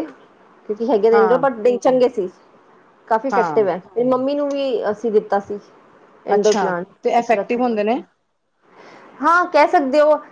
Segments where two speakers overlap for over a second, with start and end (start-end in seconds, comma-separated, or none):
6.3-7.9